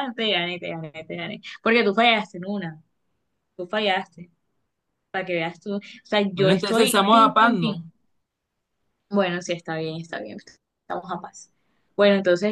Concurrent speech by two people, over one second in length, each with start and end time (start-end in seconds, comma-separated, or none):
6.3-7.9